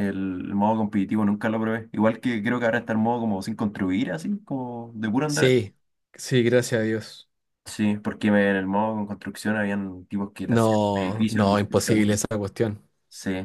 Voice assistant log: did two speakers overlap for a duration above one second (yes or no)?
yes